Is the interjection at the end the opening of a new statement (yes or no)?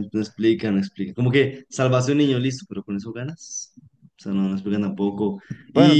yes